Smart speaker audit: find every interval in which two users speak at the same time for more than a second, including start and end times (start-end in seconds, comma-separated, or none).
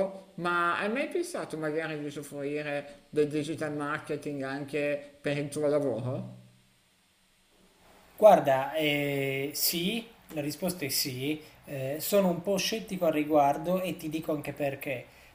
none